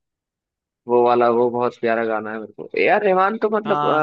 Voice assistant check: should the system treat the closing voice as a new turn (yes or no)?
no